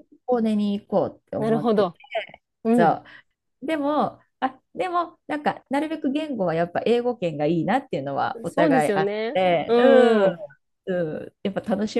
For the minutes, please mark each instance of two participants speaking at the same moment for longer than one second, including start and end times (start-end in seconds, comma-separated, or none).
8.4-10.4